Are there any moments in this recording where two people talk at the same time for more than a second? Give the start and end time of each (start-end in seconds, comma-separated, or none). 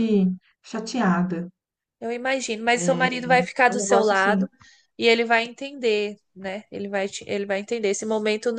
2.7-4.4